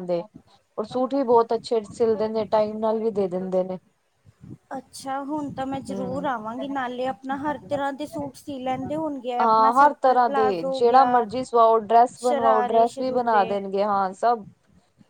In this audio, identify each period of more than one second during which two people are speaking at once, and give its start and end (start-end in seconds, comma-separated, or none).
12.2-13.6